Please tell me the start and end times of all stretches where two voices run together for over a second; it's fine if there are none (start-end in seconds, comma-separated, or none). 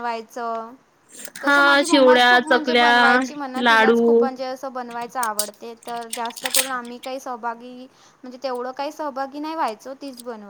1.4-2.9